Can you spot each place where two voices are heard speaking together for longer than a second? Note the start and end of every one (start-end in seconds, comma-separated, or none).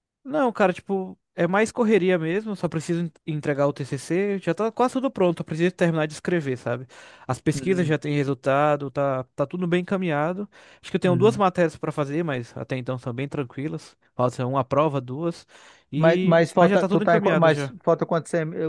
15.9-17.7